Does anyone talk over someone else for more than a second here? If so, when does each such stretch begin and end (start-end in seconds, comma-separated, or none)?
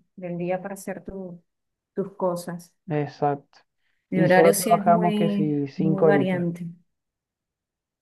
4.1-6.5